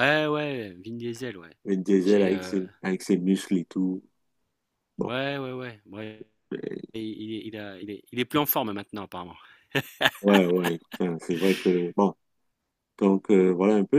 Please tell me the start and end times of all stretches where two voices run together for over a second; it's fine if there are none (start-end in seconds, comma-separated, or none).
none